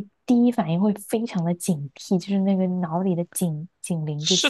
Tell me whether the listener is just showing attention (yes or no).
no